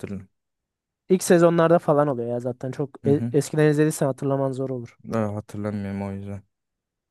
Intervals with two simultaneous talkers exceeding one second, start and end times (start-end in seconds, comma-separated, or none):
none